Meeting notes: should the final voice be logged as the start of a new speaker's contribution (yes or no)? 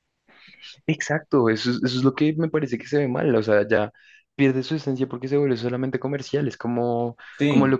no